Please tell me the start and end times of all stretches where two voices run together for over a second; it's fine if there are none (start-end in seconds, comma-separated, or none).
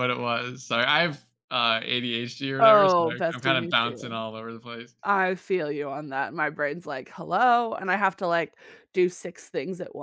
2.6-4.2